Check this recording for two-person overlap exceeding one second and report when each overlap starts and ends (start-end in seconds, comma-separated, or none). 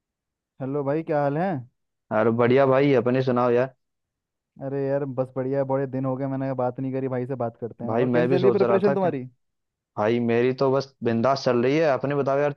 7.9-9.1